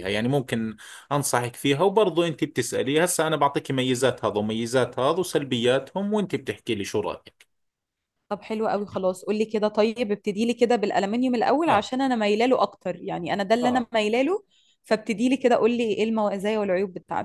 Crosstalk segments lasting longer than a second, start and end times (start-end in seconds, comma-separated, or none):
none